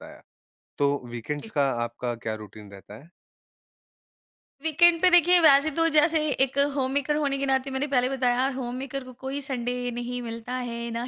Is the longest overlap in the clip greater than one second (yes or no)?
no